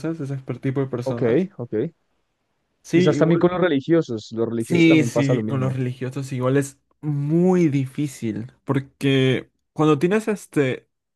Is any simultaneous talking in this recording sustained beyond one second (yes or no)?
yes